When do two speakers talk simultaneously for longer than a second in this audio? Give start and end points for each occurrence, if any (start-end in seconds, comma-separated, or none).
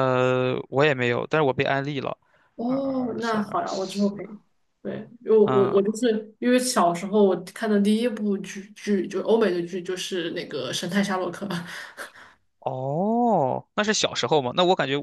2.6-4.2